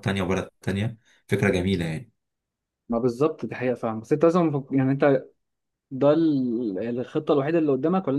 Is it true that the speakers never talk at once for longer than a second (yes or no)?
yes